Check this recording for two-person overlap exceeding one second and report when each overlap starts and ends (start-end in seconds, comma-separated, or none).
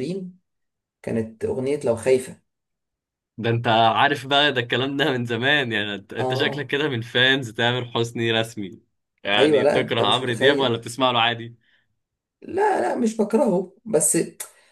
9.4-10.8